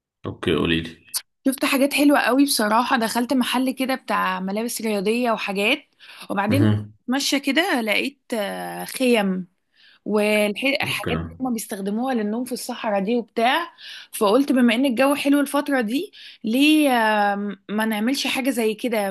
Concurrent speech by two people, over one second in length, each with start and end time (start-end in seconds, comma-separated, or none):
none